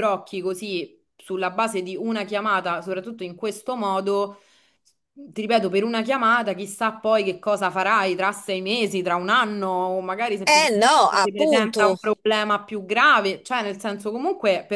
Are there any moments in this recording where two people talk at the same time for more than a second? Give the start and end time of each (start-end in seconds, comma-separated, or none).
10.4-12.0